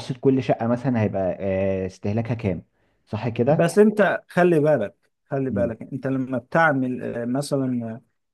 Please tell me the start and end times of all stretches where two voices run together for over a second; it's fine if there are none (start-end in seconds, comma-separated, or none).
none